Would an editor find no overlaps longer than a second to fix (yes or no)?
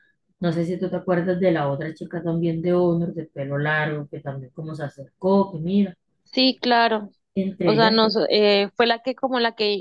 yes